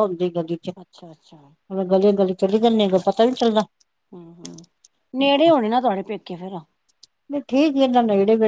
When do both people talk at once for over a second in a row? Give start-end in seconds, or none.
none